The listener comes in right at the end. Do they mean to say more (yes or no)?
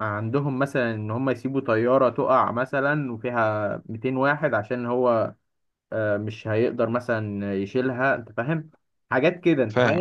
no